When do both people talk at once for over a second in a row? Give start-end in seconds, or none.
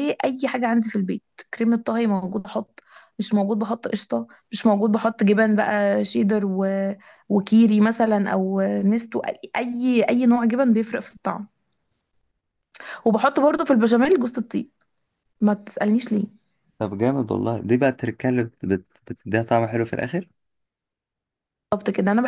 none